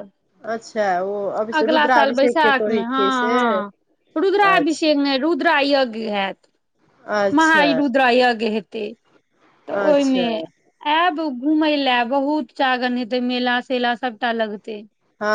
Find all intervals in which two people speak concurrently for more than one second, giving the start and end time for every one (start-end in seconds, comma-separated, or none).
1.6-3.4